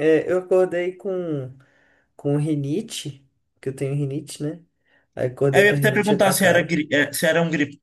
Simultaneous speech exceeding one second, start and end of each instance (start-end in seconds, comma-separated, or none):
5.5-6.8